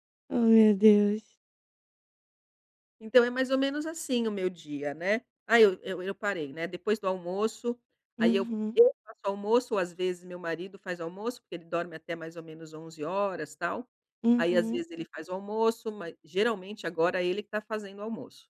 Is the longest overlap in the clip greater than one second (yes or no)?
no